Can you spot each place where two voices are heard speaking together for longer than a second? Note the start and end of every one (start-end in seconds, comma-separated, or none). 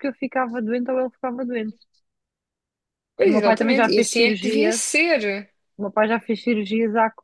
3.2-4.9